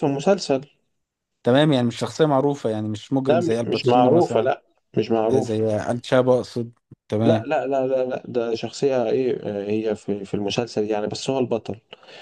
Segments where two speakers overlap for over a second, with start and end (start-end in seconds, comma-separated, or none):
3.2-4.5